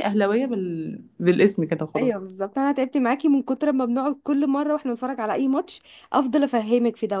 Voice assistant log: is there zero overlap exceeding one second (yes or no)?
yes